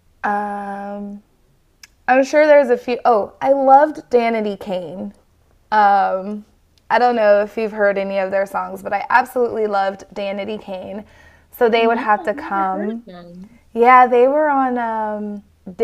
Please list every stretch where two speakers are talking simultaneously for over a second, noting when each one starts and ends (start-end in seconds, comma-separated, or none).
11.8-13.0